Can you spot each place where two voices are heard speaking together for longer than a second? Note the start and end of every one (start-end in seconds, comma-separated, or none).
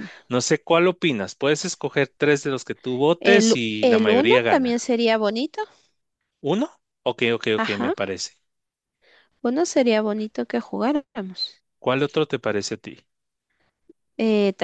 3.2-4.9